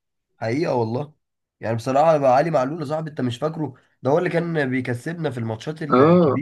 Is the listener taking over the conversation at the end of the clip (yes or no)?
yes